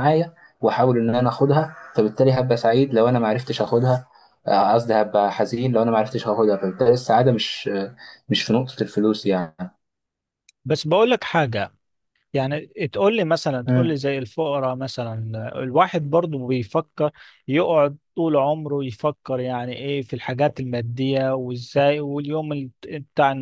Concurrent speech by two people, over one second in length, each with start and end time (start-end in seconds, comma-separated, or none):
none